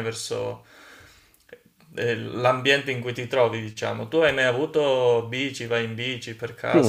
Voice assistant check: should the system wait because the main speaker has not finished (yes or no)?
no